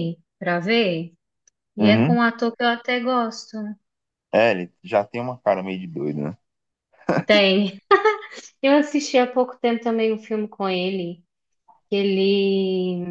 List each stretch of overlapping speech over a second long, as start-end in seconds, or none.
none